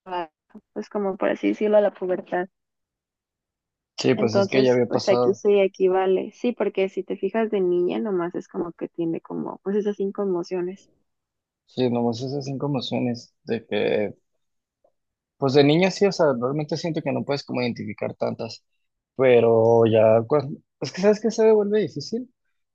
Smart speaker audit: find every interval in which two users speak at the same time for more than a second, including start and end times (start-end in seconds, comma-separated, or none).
4.1-5.4